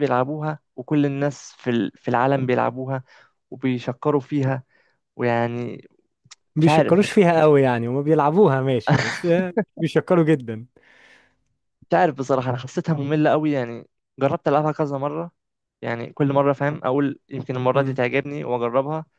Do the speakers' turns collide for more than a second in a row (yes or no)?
no